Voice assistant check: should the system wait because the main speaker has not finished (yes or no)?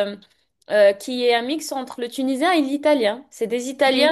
yes